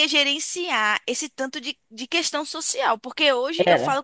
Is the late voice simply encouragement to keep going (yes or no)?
yes